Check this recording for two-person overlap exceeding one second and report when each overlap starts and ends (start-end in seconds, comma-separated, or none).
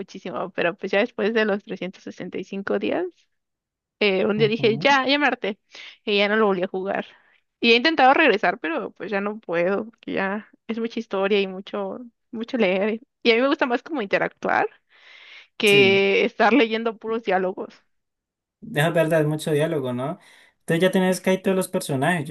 none